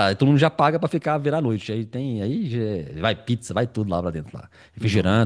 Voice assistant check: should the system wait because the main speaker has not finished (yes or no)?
yes